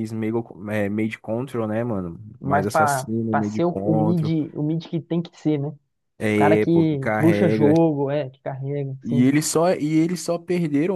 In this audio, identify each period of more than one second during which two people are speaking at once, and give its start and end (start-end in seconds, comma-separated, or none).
2.4-4.3, 6.4-7.7